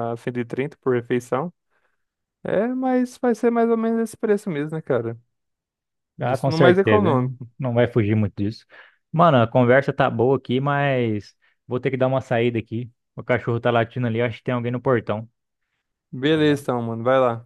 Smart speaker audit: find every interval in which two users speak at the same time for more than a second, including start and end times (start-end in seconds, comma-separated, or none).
6.2-7.5